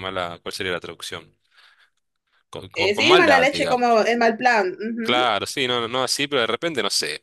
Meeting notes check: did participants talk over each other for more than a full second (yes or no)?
yes